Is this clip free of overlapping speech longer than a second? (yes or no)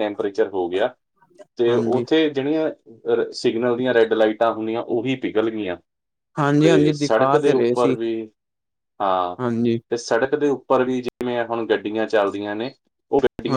no